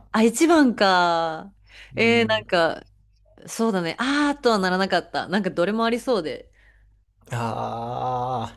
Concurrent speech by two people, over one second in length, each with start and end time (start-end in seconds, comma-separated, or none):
none